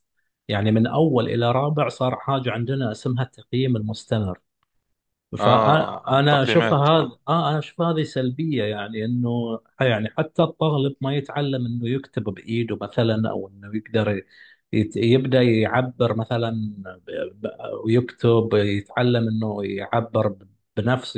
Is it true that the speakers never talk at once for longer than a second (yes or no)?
no